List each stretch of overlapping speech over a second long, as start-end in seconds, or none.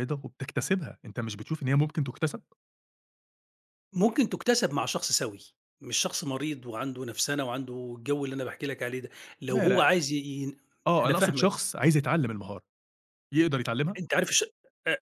none